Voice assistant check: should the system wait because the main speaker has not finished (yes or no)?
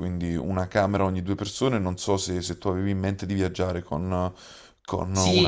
no